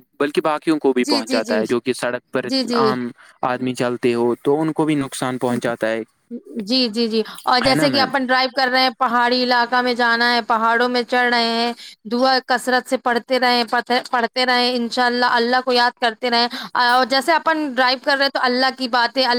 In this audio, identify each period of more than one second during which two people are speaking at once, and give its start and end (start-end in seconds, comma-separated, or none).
none